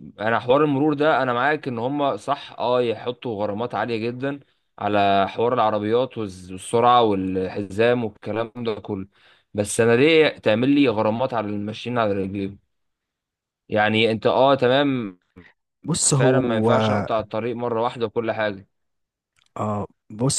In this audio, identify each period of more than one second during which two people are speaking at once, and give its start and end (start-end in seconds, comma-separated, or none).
none